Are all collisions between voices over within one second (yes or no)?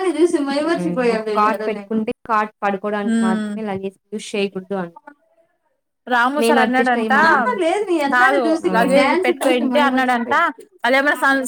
no